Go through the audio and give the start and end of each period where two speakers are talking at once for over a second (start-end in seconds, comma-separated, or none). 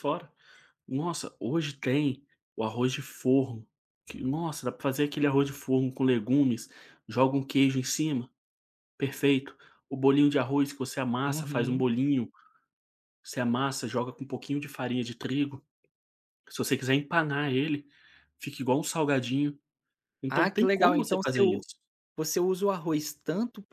20.3-21.6